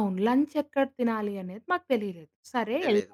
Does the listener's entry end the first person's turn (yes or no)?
no